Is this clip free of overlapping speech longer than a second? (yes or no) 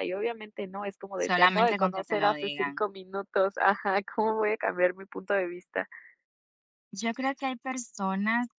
no